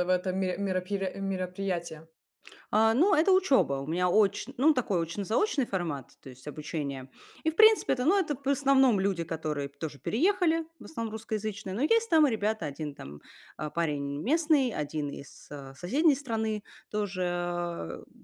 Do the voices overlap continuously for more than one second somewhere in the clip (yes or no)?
no